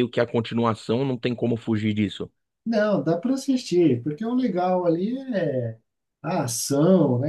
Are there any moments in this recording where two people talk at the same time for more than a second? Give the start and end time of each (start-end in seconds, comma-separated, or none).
none